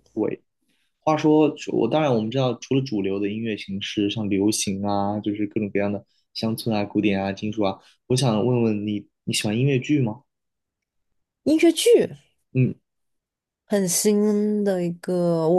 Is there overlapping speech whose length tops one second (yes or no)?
no